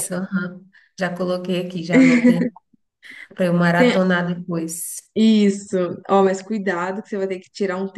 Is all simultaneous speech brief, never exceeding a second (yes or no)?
yes